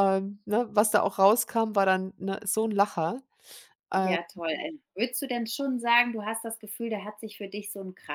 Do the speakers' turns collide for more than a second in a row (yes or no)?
no